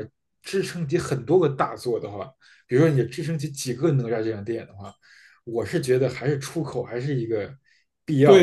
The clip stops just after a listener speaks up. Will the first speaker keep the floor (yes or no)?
no